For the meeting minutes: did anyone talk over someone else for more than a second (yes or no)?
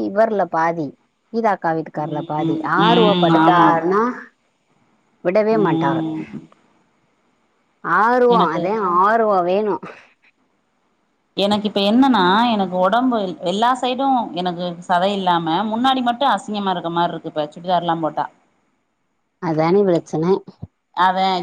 yes